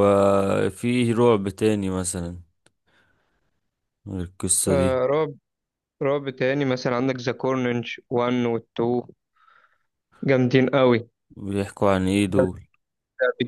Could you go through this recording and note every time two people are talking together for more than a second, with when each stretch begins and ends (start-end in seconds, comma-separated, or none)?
none